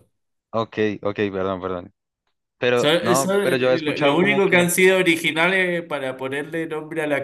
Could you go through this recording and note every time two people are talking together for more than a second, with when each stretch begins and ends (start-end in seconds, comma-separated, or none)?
2.7-4.7